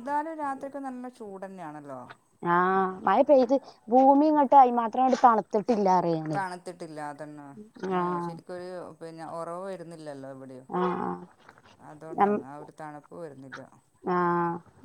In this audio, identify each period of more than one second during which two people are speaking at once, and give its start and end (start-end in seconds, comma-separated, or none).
none